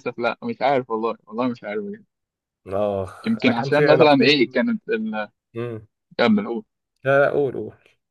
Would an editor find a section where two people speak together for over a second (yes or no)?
yes